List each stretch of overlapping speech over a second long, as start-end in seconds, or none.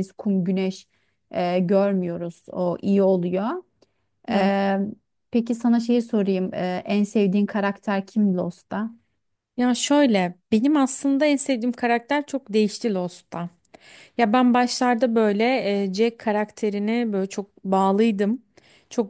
none